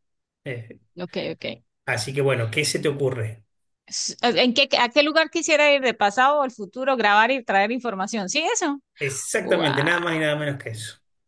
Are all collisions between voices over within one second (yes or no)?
yes